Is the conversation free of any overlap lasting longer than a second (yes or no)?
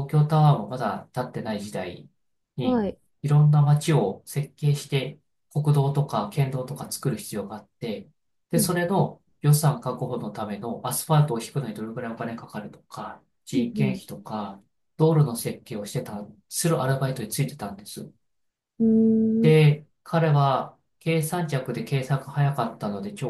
yes